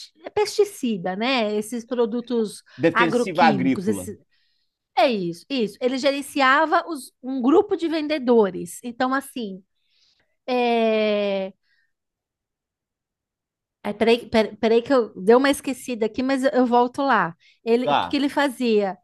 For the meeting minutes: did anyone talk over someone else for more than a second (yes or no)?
yes